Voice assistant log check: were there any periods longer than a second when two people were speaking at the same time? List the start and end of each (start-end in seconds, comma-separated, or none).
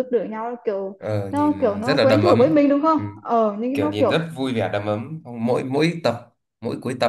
1.0-3.0